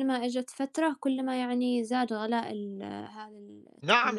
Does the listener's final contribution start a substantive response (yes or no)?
yes